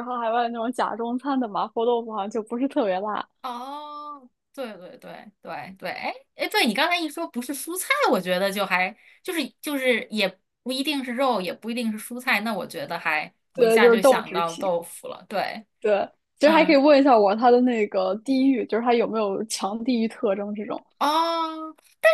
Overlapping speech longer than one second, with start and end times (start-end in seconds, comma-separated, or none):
13.5-14.7